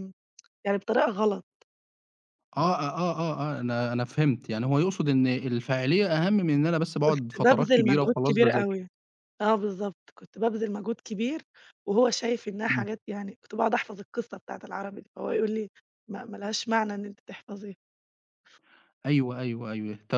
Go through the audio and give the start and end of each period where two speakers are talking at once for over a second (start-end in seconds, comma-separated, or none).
7.1-8.7